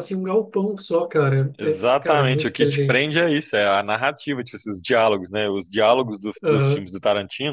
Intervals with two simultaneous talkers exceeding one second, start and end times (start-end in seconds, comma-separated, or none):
1.6-3.1